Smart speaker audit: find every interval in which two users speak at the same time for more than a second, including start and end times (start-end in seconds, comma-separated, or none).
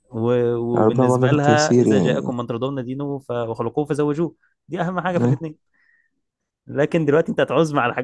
0.8-2.3